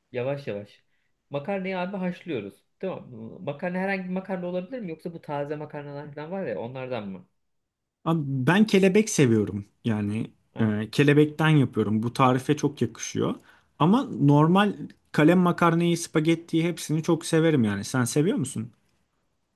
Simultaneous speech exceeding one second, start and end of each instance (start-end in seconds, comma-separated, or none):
none